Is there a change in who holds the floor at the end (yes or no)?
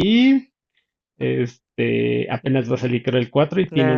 yes